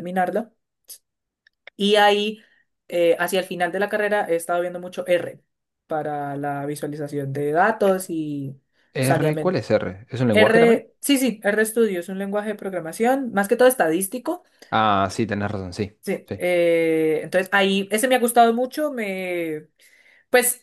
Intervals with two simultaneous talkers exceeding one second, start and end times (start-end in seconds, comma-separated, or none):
none